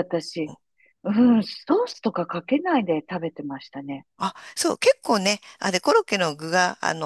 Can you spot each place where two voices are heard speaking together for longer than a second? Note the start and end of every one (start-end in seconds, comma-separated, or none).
none